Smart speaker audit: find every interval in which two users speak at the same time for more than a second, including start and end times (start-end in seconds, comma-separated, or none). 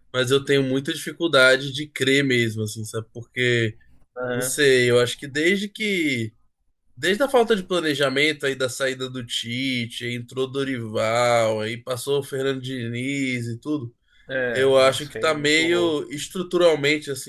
14.5-15.9